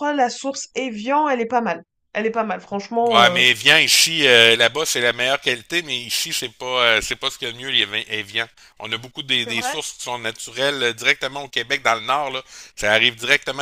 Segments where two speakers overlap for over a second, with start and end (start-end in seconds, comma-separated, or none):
none